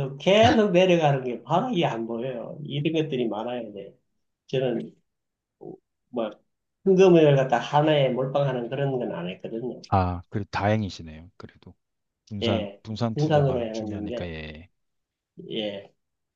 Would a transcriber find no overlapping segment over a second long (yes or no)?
no